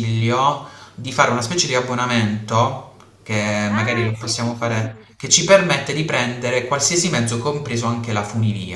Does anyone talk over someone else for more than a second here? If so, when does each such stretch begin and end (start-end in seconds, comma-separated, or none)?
3.7-5.4